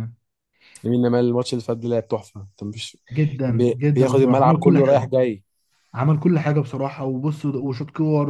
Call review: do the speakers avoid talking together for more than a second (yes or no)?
no